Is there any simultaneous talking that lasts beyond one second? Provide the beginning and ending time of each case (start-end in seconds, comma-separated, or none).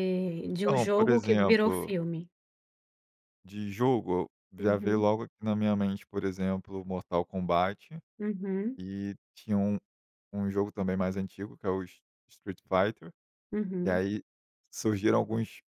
0.6-1.9